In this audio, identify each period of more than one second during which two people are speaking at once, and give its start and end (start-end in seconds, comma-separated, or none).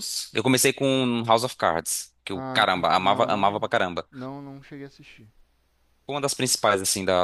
2.3-3.7